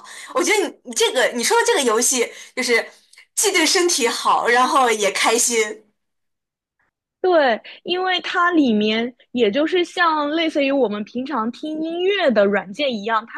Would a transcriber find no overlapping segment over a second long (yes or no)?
yes